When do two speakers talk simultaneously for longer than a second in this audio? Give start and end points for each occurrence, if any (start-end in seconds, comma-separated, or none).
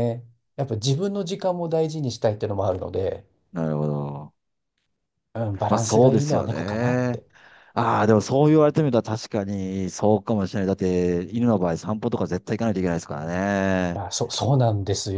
5.7-7.2